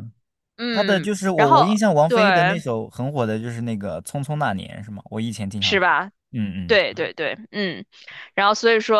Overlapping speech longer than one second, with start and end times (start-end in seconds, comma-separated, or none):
0.7-2.6